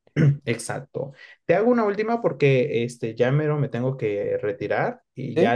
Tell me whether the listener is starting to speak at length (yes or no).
no